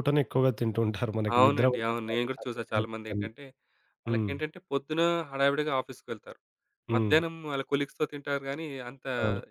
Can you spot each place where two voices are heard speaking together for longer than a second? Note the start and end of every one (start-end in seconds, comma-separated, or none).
1.4-3.2